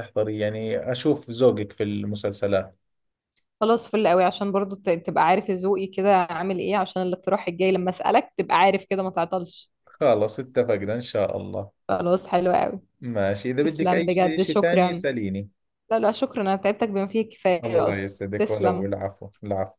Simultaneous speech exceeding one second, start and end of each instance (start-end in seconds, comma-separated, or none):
13.6-15.0, 17.6-18.9